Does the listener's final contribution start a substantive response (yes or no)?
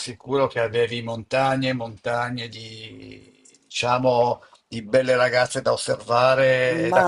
yes